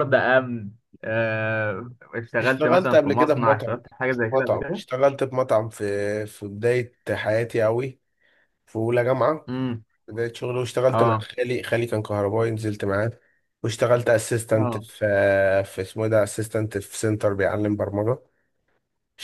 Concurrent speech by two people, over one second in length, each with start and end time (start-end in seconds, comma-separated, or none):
2.4-4.8